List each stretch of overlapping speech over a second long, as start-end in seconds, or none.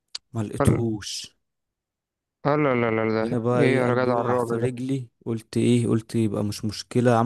3.2-4.7